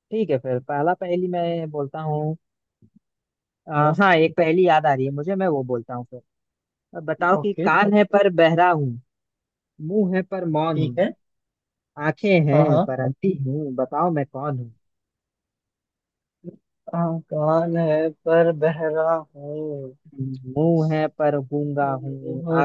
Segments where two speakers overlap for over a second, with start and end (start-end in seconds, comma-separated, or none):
none